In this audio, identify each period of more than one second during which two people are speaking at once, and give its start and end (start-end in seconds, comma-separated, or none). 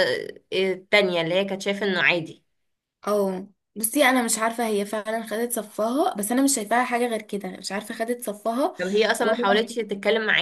none